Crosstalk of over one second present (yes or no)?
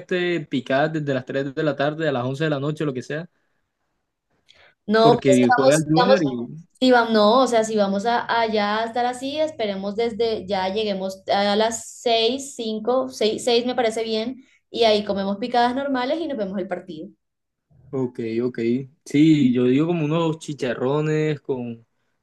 yes